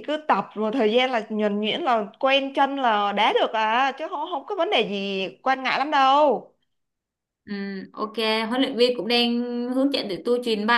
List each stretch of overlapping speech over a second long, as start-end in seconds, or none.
none